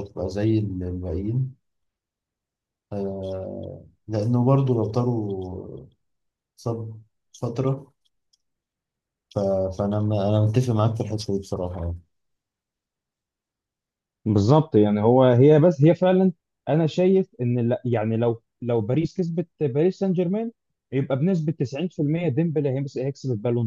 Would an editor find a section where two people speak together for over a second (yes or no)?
no